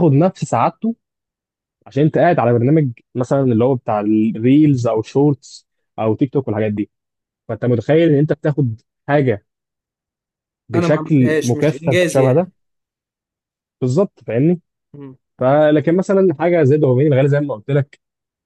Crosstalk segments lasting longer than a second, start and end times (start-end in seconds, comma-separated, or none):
10.8-12.5